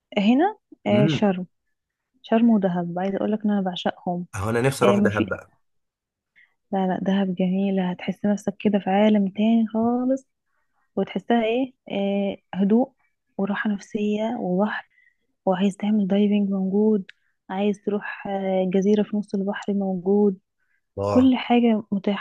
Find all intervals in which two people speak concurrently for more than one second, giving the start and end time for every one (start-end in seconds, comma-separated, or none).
none